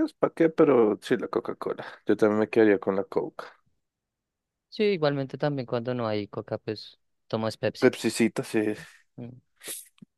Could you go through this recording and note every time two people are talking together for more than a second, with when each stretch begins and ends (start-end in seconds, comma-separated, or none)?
none